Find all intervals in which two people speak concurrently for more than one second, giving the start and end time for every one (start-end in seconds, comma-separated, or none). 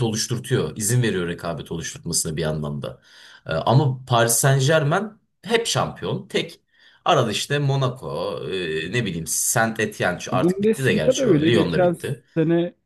10.3-12.0